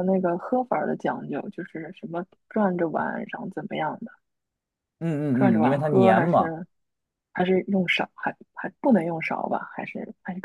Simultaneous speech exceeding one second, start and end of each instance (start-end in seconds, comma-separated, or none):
5.3-6.6